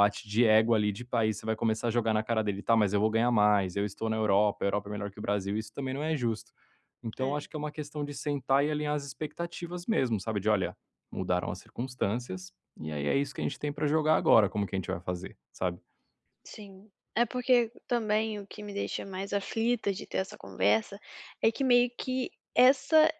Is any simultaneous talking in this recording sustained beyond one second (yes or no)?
no